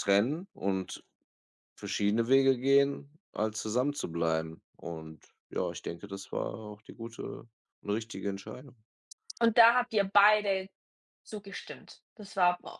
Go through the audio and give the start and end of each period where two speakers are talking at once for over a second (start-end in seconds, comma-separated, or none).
none